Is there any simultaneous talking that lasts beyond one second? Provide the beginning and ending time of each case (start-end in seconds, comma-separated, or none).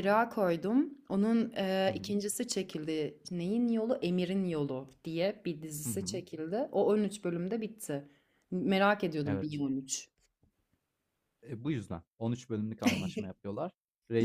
none